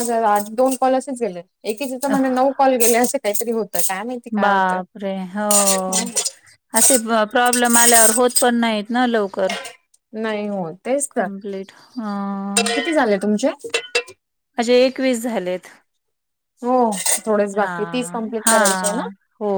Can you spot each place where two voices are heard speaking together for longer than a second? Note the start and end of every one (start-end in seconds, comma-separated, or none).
none